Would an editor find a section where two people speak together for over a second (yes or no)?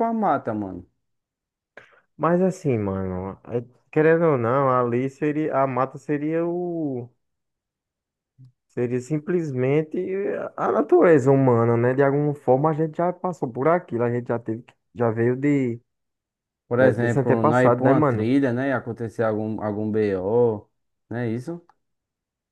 yes